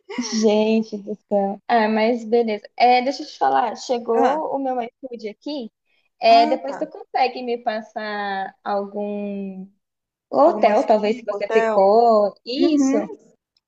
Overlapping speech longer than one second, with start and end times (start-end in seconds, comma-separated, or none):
10.4-11.8